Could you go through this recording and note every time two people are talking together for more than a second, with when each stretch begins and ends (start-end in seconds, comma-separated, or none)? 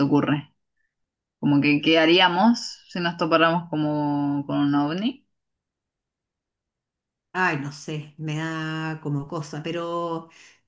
none